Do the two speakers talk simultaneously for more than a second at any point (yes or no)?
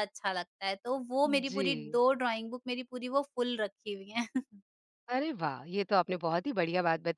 no